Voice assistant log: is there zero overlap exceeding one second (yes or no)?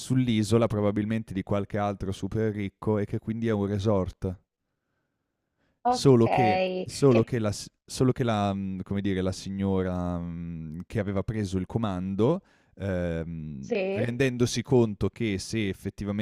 no